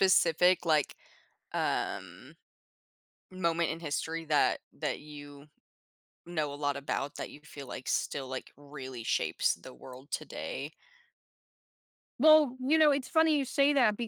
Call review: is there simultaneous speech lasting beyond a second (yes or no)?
no